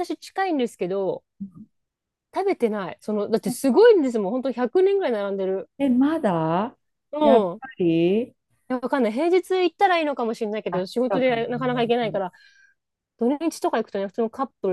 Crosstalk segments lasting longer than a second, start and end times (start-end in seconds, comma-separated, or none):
10.7-12.2